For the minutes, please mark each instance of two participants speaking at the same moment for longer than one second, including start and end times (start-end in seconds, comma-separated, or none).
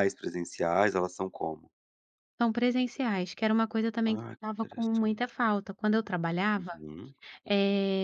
4.1-5.3